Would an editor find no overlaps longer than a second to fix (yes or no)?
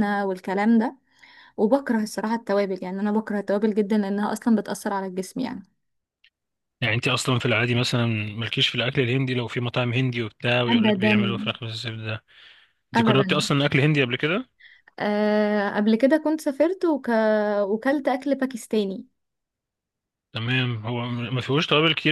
yes